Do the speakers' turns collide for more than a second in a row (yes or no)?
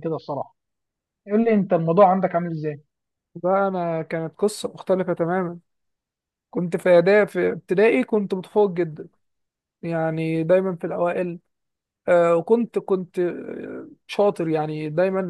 no